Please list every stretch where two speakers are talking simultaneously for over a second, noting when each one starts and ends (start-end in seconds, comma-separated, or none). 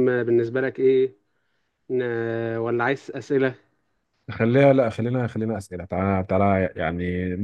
none